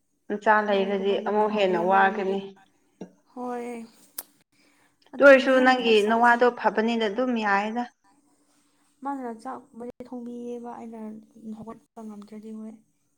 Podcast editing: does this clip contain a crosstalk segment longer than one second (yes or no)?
yes